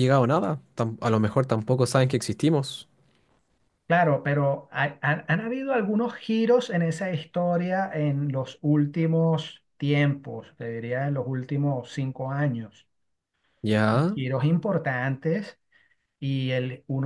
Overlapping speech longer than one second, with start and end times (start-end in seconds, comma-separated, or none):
none